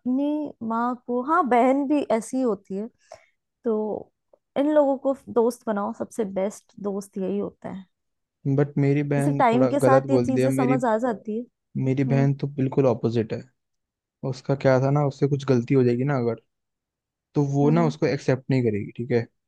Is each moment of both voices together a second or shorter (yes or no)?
no